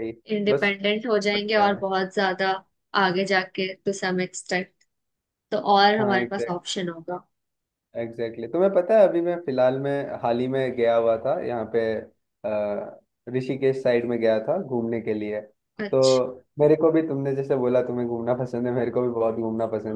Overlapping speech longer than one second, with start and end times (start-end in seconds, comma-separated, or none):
none